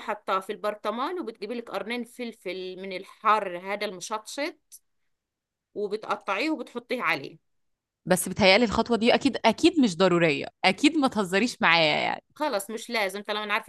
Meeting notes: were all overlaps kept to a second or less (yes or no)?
yes